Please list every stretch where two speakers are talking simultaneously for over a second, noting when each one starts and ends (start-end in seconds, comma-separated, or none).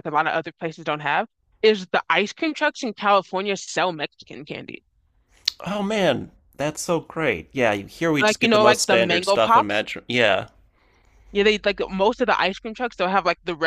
8.2-9.8